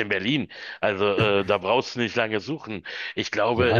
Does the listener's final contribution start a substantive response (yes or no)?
yes